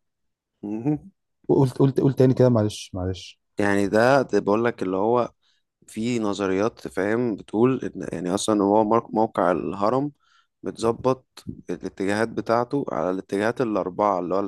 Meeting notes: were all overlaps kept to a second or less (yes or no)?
yes